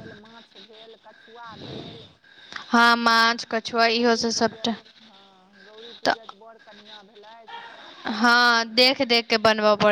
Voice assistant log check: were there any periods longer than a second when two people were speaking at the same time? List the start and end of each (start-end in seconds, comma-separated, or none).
3.0-4.7